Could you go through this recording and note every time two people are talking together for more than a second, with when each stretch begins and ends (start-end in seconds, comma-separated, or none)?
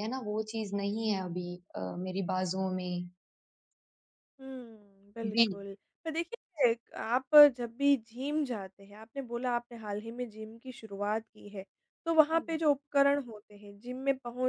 none